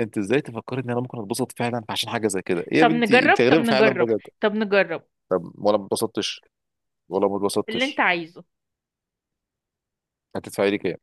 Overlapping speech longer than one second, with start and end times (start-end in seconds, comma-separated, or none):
2.8-4.2